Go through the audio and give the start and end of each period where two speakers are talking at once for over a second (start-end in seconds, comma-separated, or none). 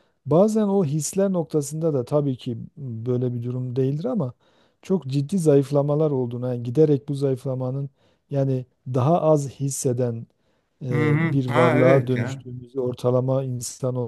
10.9-12.4